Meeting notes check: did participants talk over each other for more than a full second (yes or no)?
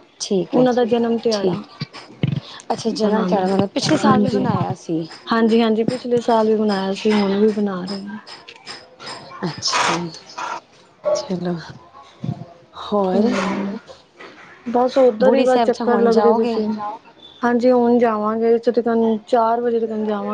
yes